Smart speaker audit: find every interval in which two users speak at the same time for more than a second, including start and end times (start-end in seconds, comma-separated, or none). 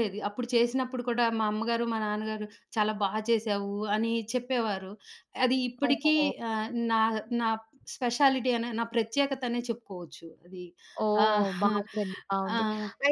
none